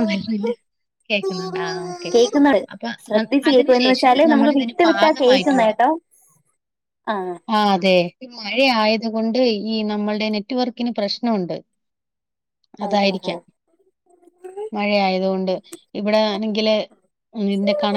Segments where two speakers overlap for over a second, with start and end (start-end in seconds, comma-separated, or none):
3.5-5.7